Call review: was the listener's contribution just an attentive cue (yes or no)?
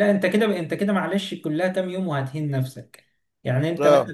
yes